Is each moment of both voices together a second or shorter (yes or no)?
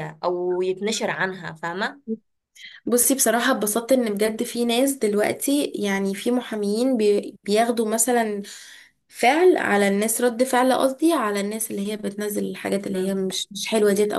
yes